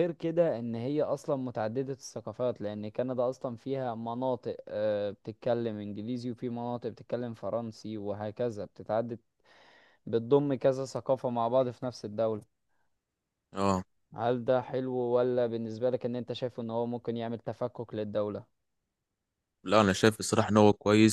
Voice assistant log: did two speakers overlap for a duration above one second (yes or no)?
no